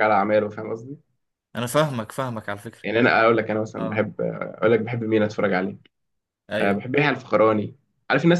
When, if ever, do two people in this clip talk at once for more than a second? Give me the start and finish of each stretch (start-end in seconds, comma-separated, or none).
none